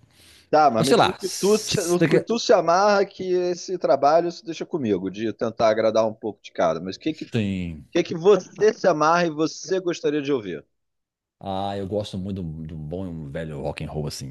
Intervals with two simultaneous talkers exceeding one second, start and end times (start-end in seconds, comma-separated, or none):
0.8-2.3